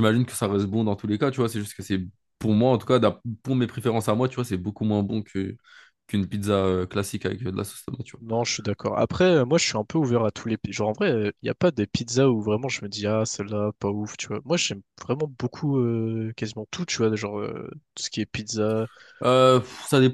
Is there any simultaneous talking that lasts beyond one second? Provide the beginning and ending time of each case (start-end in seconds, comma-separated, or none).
none